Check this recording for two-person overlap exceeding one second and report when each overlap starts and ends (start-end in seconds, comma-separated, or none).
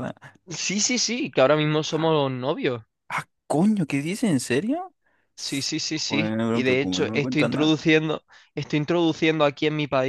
6.1-7.7